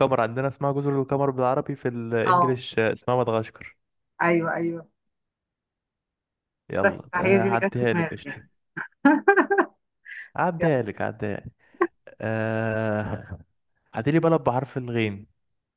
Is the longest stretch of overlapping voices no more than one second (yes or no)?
no